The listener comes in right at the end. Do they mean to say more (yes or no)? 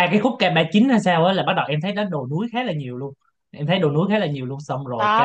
yes